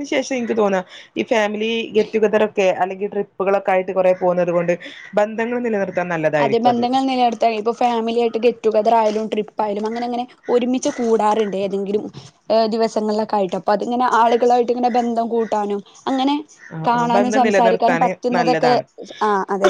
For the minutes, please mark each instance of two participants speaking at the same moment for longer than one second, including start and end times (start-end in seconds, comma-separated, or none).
16.9-18.7